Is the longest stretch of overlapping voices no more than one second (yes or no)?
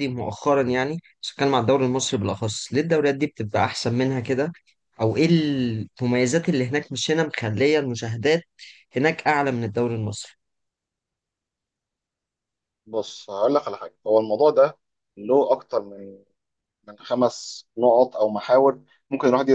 yes